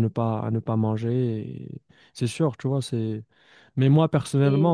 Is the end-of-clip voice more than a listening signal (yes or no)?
no